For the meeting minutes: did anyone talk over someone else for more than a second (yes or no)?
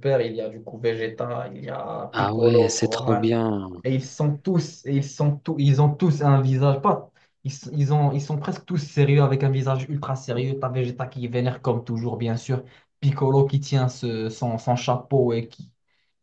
yes